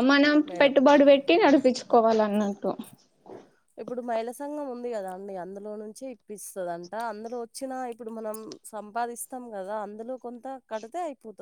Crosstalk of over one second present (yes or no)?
no